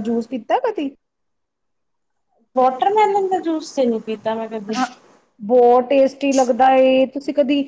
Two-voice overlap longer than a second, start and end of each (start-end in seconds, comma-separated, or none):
none